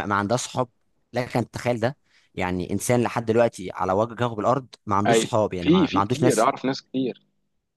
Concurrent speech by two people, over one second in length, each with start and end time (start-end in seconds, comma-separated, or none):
5.1-6.5